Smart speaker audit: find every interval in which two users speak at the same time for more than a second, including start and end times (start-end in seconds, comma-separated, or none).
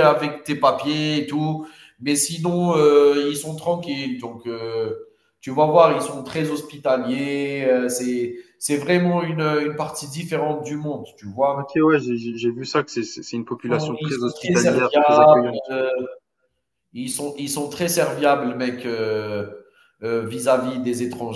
13.5-15.7